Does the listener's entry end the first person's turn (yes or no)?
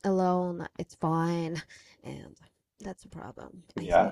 yes